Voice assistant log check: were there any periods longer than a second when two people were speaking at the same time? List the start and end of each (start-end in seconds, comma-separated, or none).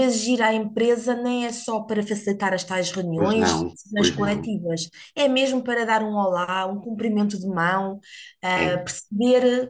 3.1-4.5